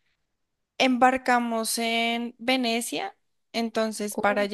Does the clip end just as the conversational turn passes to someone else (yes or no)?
no